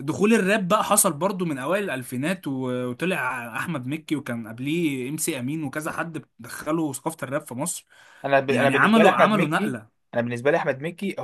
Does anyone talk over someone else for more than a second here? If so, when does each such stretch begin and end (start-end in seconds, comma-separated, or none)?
8.5-9.8